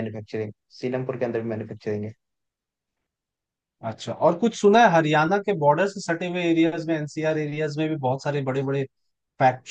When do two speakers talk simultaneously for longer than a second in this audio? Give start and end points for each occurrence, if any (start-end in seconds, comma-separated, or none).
none